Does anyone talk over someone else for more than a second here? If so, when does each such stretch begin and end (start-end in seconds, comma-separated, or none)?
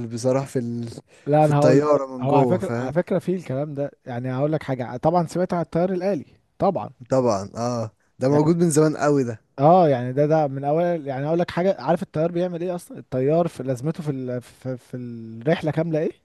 1.4-3.0